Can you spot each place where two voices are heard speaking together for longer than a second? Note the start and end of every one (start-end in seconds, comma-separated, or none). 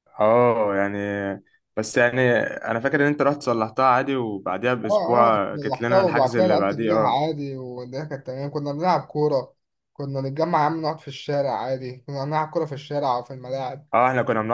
4.8-7.2